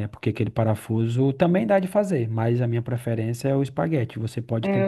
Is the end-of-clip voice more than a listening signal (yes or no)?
yes